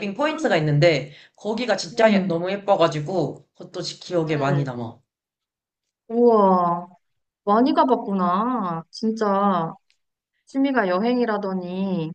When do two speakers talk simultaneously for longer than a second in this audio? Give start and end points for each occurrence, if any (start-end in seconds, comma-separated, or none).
none